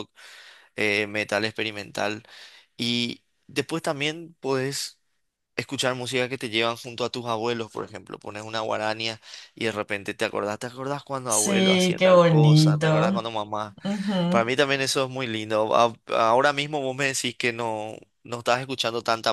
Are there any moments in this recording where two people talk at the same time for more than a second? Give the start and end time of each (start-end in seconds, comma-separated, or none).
11.3-13.3